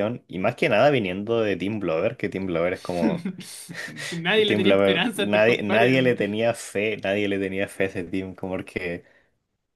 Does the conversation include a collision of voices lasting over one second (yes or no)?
yes